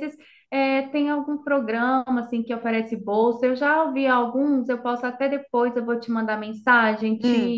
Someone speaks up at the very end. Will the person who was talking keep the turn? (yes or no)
yes